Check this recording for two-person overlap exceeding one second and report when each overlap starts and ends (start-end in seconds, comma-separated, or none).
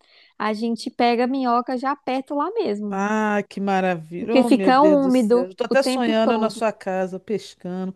4.2-6.7